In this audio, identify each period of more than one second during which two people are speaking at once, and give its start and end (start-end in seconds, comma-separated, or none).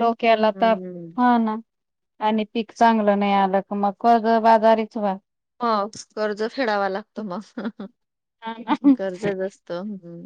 none